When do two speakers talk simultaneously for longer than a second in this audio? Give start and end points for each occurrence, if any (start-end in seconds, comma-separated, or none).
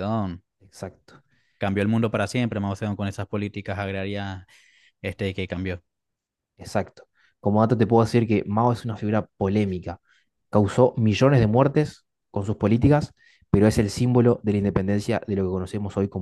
none